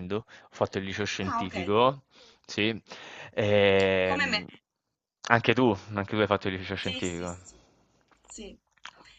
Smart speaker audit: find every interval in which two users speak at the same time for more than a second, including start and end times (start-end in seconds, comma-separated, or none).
none